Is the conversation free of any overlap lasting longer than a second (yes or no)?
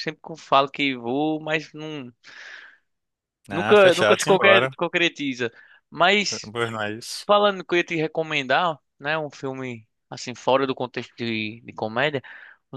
no